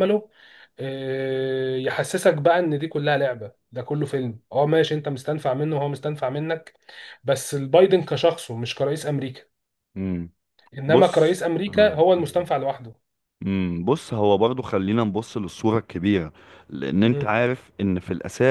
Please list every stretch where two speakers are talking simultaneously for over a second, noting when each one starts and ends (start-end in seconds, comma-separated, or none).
10.9-12.5